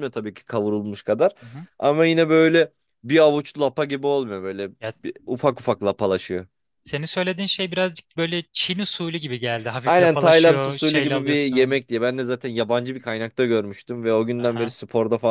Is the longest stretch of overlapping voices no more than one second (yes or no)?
no